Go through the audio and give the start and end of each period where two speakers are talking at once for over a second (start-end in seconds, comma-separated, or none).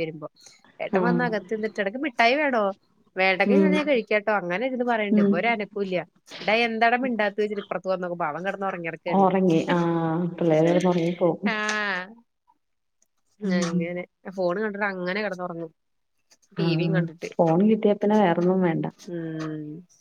none